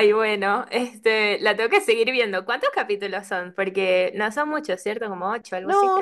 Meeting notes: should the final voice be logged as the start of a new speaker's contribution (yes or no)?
yes